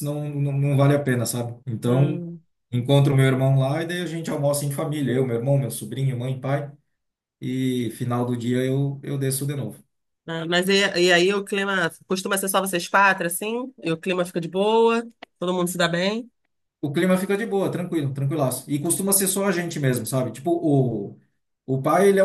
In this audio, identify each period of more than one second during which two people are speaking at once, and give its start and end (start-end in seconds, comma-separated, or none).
none